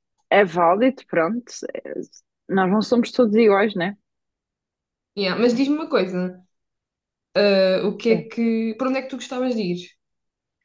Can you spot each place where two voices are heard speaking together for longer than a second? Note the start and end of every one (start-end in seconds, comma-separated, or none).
none